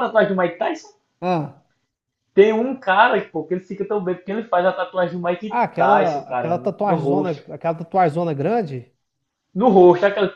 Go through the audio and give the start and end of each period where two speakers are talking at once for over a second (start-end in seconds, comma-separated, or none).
5.5-7.1